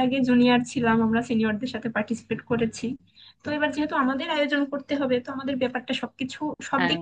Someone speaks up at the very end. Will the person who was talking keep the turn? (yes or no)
yes